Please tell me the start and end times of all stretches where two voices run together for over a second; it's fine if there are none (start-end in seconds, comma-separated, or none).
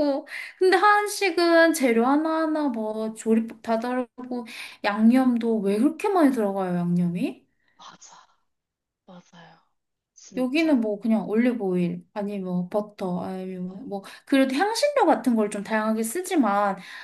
none